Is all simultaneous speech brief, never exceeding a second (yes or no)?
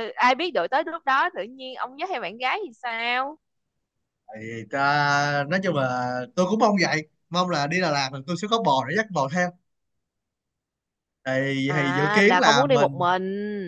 no